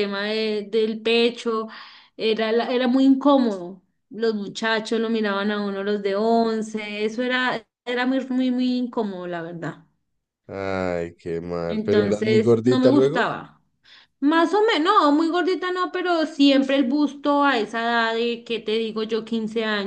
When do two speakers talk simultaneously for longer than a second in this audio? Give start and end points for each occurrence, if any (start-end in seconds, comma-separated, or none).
11.7-13.3